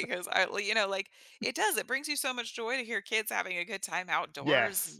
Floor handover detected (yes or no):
yes